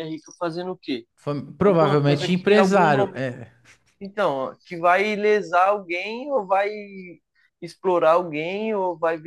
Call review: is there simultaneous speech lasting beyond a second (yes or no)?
yes